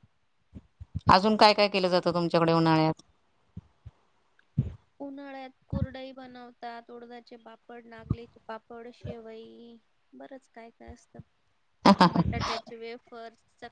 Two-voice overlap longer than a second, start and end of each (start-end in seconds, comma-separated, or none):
none